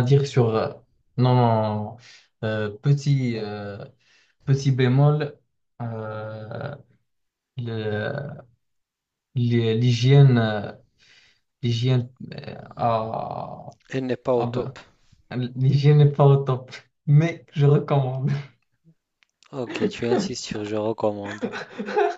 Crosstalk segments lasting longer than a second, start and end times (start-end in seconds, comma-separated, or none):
none